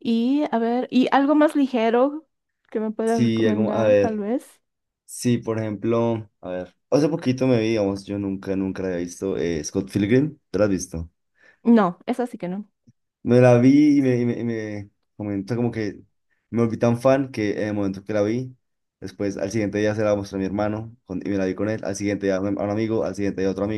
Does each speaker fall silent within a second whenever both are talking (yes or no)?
no